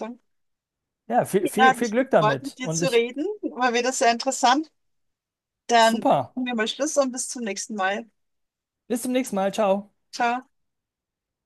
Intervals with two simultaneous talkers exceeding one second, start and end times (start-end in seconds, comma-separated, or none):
1.4-3.0